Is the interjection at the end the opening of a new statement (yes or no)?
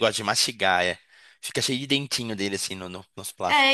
yes